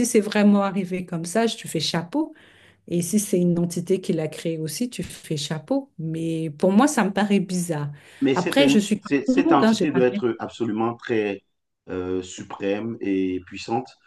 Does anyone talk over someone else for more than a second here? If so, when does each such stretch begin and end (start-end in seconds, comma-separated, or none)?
8.3-10.1